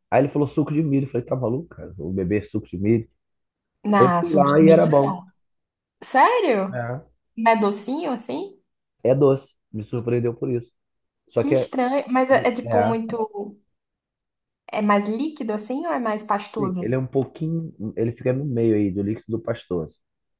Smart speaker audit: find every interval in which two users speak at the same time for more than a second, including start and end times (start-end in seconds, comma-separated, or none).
3.9-5.2